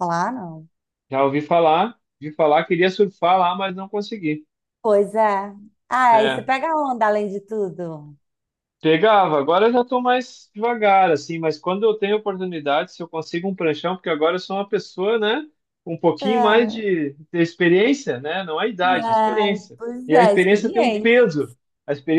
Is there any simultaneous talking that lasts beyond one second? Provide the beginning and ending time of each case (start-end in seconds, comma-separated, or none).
19.0-21.3